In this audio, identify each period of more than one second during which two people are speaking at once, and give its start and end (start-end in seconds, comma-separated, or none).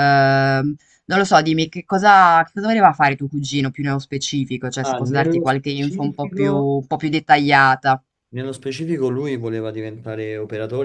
4.8-6.7